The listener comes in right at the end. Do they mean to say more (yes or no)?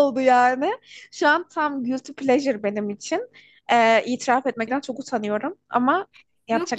yes